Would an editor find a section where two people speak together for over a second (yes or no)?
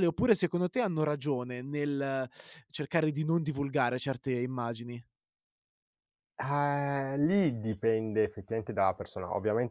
no